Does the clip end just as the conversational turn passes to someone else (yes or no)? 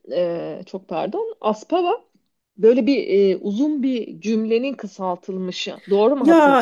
yes